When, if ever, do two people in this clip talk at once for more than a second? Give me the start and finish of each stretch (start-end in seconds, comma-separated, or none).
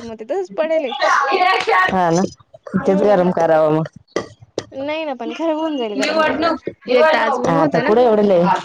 5.9-7.9